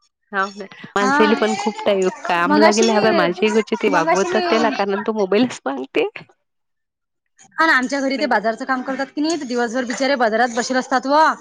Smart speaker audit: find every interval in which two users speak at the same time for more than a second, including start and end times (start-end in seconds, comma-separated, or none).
2.5-4.4